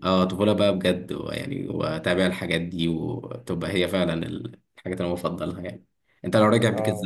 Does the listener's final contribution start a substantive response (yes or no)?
no